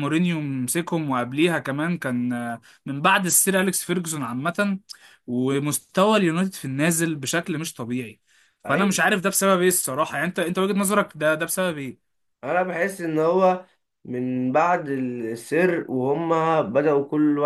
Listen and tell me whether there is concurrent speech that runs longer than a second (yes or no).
no